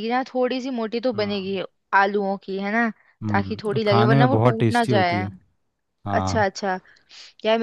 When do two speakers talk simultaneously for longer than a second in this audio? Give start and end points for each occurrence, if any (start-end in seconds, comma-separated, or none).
3.3-5.2